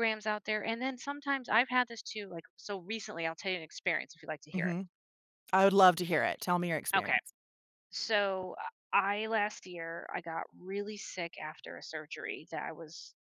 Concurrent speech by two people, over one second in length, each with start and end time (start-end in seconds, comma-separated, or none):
none